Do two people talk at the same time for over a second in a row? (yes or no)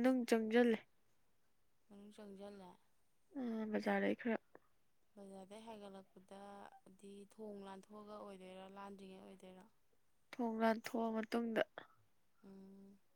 no